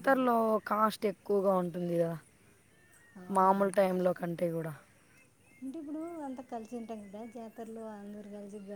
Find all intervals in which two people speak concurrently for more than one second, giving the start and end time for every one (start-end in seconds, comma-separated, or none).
none